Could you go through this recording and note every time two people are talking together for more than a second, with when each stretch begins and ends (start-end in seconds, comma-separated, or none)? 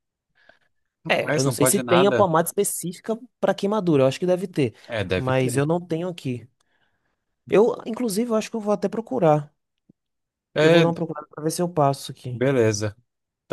1.1-2.3